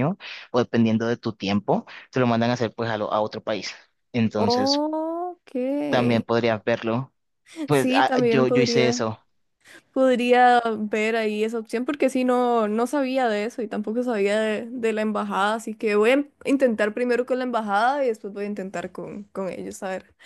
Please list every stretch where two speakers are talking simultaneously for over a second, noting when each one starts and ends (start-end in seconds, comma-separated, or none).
7.7-9.0